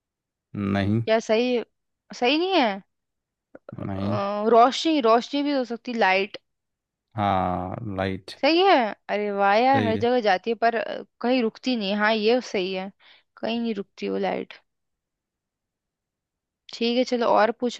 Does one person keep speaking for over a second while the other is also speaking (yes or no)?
no